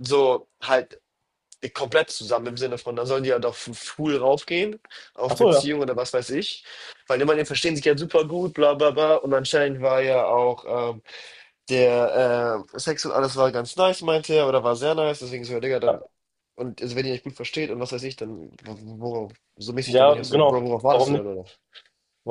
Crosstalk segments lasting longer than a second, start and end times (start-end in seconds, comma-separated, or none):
19.8-21.2